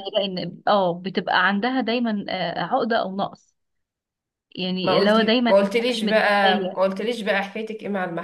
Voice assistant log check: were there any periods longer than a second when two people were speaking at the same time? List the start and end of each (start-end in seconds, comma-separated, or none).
4.8-6.8